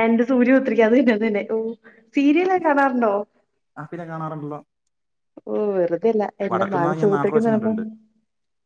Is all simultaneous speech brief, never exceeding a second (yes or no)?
no